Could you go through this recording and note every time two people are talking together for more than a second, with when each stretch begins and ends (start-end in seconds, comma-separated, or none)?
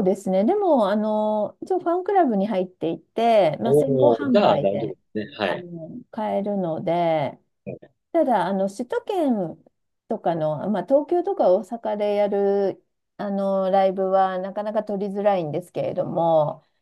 3.6-5.0